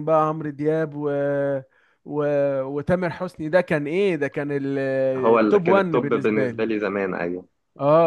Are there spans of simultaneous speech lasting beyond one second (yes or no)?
yes